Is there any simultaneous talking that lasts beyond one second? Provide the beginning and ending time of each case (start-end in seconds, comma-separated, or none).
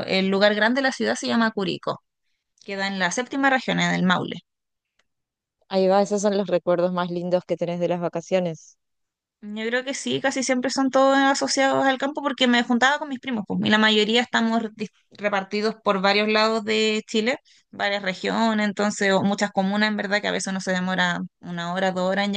none